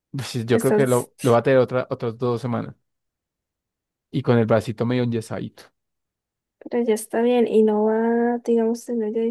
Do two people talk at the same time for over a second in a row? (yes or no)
no